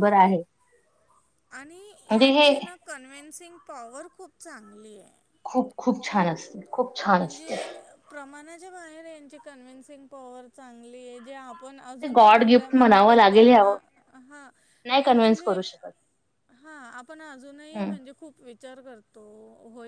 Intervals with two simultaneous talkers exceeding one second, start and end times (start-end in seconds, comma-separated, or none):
12.0-13.8